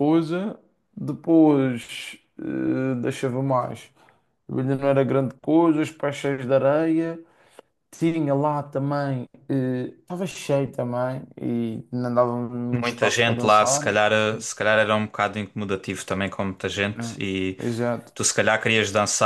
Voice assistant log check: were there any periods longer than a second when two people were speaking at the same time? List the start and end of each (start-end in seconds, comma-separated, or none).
12.7-14.5